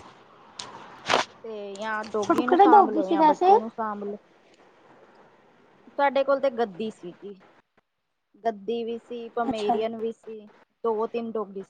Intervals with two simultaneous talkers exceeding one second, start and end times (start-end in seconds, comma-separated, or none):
2.1-3.5